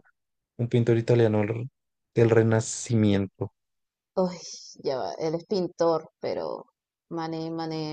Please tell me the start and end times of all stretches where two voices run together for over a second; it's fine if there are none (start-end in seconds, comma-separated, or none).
none